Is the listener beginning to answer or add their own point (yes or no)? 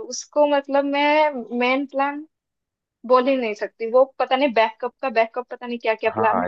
yes